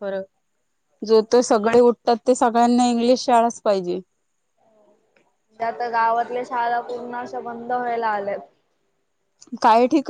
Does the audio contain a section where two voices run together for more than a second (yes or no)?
no